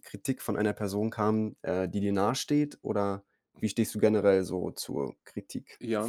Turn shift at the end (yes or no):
yes